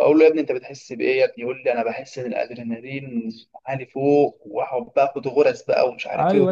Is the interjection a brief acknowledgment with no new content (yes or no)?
no